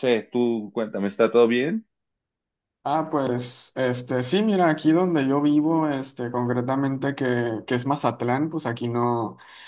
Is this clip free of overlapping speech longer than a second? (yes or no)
yes